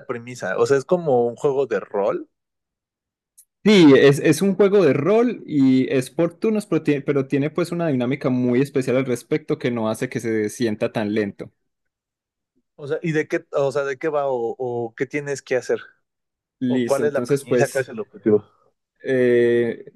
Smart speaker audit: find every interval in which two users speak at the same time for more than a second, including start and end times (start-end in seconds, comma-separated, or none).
16.7-17.9